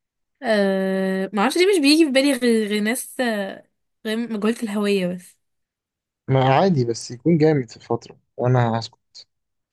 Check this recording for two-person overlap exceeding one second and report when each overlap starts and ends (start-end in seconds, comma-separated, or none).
none